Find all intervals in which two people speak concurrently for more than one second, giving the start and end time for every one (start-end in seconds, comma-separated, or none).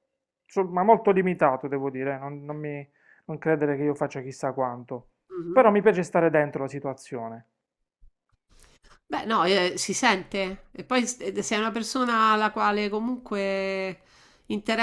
none